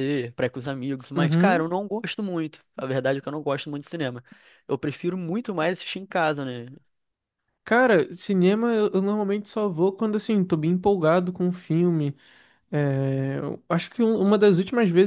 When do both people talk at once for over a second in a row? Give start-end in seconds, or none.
none